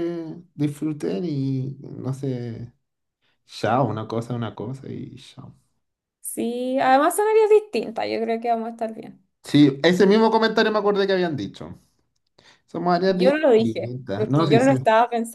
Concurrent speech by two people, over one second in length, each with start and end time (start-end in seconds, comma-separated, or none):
13.1-14.7